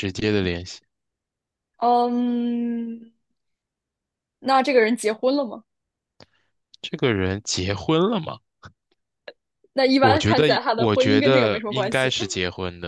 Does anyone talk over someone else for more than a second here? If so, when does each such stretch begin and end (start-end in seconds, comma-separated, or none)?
10.0-12.1